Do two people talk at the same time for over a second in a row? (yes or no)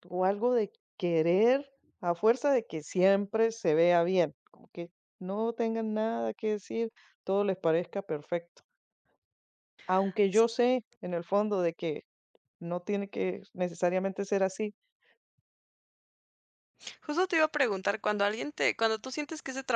no